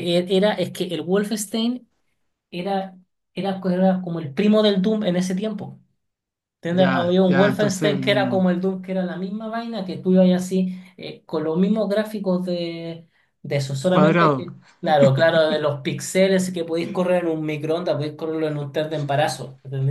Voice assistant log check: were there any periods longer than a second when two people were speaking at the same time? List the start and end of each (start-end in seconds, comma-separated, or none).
6.7-8.5